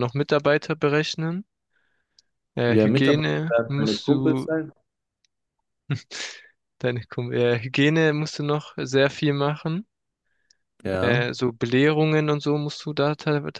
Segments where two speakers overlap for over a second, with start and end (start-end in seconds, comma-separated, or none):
2.7-4.5